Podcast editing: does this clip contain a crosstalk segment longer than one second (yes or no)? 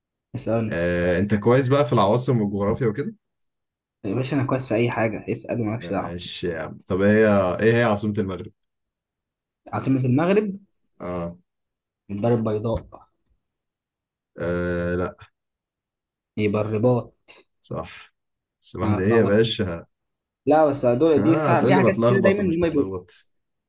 yes